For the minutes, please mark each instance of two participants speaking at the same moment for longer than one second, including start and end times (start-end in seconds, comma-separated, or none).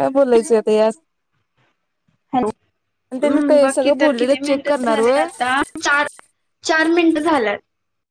3.2-5.2